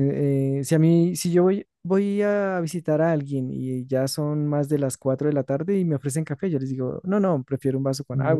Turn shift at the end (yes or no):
no